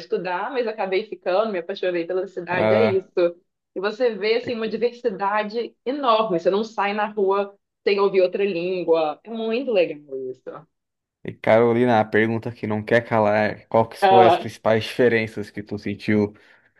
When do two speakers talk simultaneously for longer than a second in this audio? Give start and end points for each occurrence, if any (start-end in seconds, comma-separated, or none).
none